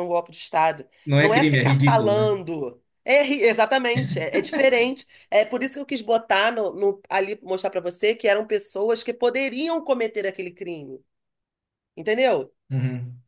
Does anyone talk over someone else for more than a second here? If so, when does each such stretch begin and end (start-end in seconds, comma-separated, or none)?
1.0-2.3